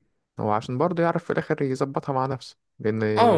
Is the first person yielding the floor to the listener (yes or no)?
yes